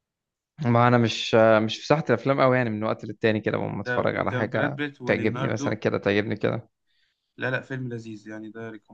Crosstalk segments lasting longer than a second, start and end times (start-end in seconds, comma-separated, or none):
3.8-5.7